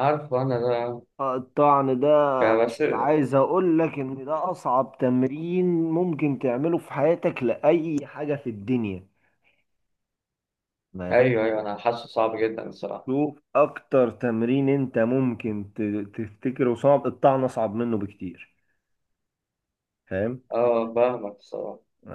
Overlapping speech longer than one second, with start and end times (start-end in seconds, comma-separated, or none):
none